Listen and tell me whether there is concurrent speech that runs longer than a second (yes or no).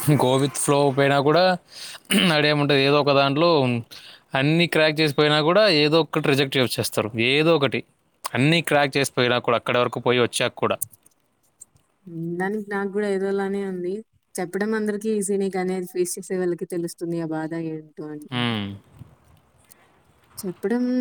no